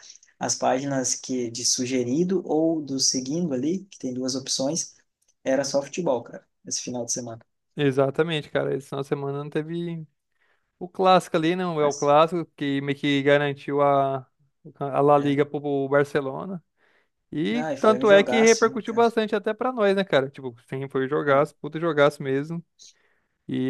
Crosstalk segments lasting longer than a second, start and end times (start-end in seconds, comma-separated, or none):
17.5-19.1